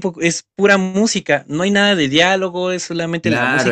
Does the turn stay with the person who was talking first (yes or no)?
no